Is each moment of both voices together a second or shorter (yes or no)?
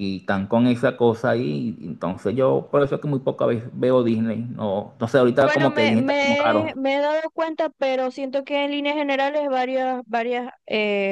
no